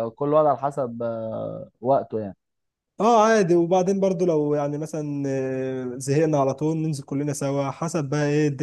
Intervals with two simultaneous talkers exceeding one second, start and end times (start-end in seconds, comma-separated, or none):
none